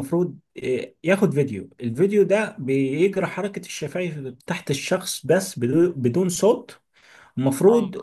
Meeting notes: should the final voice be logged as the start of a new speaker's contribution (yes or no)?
no